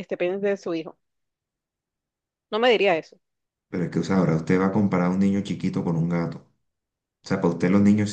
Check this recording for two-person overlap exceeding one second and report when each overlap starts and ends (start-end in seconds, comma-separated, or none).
none